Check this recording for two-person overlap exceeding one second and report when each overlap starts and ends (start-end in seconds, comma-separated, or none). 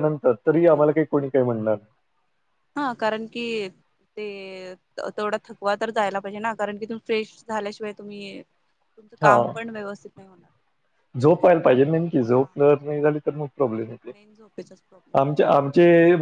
none